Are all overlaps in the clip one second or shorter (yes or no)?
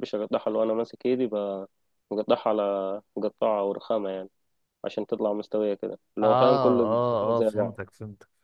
no